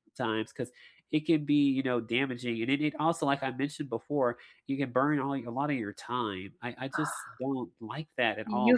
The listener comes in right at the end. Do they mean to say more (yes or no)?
yes